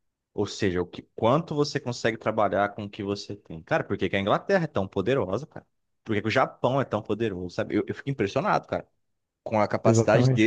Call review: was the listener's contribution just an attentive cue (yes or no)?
yes